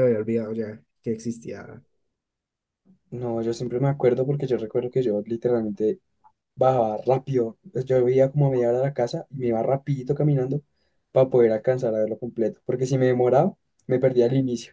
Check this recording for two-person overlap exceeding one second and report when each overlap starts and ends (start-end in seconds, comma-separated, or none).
none